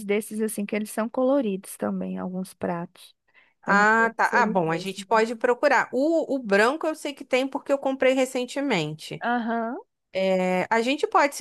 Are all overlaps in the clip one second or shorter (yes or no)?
no